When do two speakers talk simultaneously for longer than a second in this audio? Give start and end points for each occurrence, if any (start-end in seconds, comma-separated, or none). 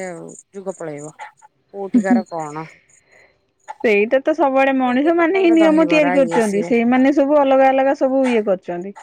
4.8-6.7